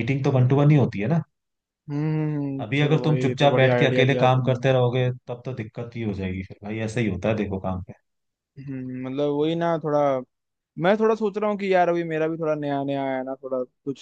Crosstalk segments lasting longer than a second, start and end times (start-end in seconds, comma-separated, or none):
2.6-4.7